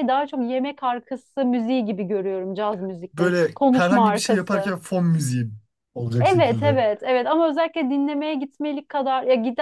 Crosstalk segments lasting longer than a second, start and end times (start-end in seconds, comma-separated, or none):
3.1-4.7